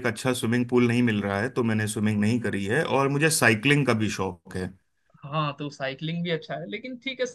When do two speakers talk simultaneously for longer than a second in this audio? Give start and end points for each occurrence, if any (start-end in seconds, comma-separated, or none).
none